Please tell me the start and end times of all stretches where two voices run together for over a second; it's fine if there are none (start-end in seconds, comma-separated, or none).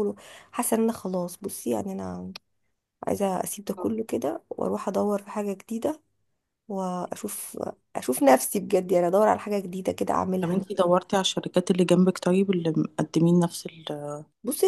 none